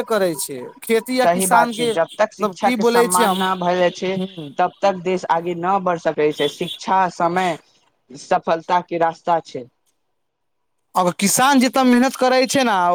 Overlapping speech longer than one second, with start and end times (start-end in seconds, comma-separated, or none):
1.2-3.4